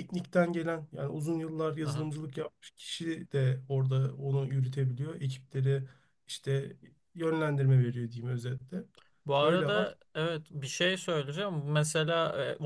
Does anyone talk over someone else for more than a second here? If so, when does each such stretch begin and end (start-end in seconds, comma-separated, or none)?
none